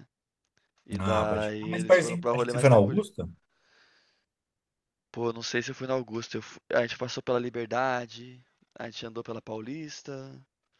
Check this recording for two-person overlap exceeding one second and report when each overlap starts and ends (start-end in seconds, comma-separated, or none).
1.0-3.0